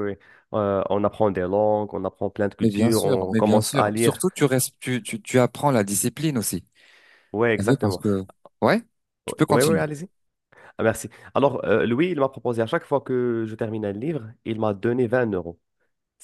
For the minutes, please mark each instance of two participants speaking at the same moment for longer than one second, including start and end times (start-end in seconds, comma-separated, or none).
2.6-4.2